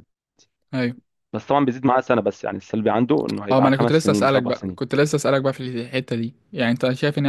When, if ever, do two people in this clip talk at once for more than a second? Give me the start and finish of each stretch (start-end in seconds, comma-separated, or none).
3.5-4.8